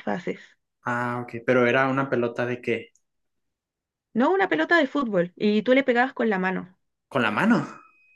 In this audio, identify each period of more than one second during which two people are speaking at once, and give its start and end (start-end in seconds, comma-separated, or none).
none